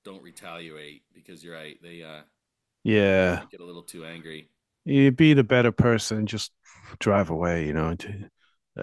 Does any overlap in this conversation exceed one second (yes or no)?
no